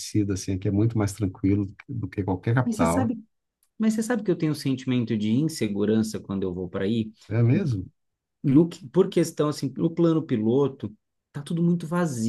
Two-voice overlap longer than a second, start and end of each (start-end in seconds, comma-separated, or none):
none